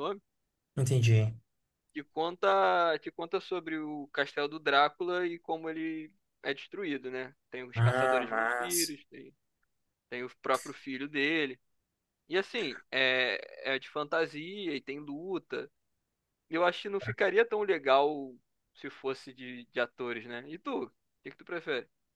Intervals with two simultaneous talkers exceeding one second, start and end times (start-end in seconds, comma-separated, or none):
7.8-9.0